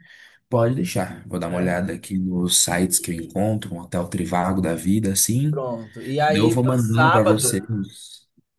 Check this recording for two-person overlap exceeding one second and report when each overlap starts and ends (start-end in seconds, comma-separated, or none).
6.3-7.5